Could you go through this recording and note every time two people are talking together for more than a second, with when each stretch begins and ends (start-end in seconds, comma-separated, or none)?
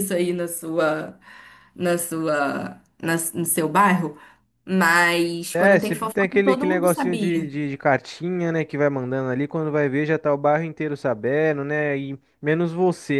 5.5-7.5